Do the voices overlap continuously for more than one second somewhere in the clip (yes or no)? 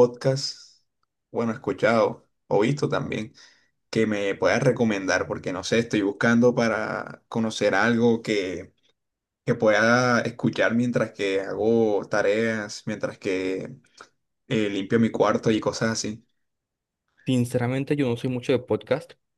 no